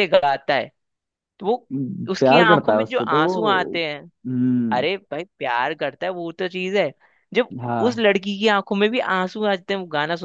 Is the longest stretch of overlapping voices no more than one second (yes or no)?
no